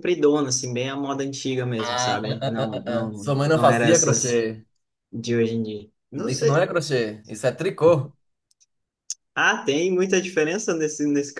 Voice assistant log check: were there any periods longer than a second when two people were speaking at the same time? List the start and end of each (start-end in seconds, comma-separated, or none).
1.8-4.5